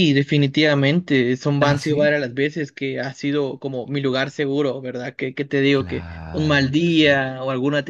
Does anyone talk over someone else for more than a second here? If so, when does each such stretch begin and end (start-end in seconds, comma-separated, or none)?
5.7-7.2